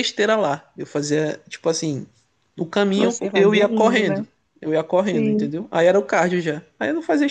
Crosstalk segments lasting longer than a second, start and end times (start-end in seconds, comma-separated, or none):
3.0-4.2